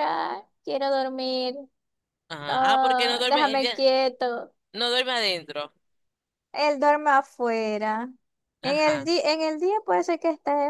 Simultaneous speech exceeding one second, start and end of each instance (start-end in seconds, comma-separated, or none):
2.5-3.9